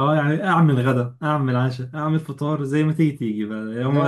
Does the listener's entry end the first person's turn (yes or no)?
yes